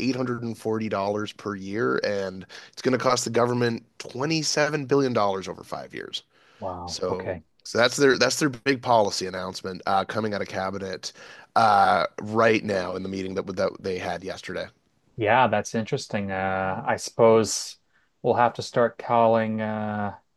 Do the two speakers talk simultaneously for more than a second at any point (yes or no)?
no